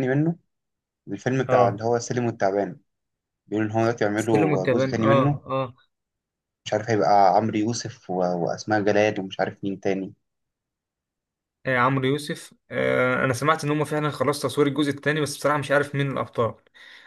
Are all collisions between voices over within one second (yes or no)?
no